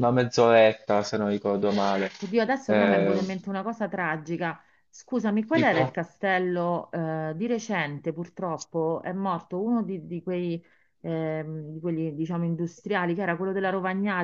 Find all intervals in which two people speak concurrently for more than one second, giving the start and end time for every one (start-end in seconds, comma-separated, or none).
none